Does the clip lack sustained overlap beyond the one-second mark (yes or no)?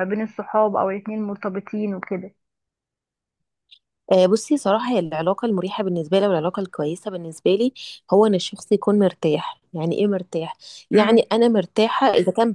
yes